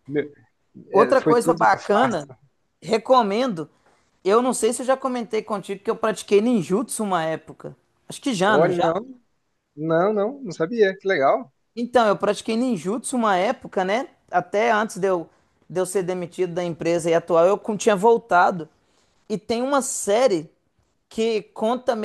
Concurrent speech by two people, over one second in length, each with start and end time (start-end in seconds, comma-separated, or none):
0.9-2.3